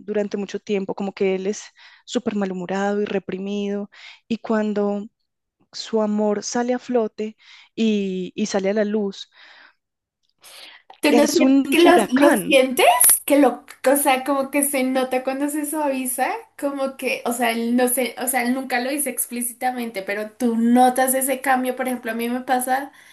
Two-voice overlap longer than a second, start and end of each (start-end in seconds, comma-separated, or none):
11.1-12.6